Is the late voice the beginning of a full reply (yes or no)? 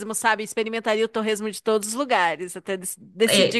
yes